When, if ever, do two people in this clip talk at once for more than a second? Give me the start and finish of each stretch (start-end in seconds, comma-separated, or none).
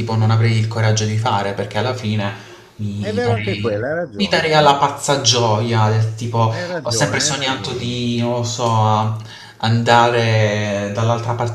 3.0-4.5, 6.5-7.9